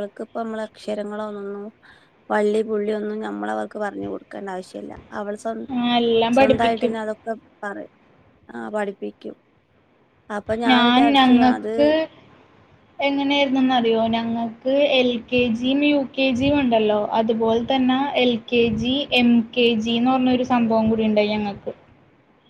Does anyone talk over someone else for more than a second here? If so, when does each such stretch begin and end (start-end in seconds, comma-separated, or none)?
none